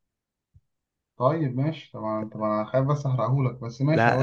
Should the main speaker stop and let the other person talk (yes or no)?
yes